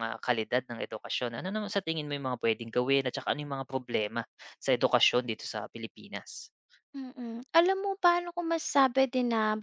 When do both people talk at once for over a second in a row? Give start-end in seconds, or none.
none